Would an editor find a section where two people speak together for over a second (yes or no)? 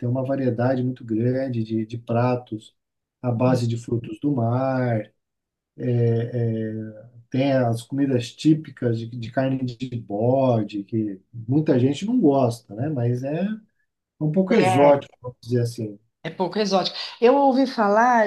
no